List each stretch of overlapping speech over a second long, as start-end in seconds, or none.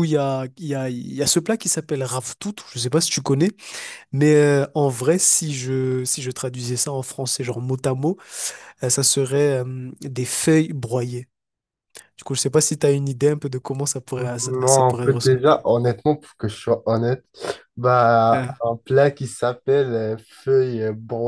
14.2-15.6